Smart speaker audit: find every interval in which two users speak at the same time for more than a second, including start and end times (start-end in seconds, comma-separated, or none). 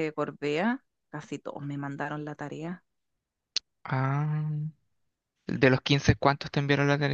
none